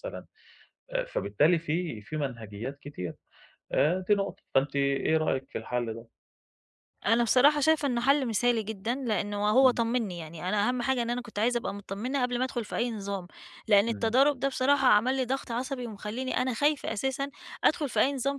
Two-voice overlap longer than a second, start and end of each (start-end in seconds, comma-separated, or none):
none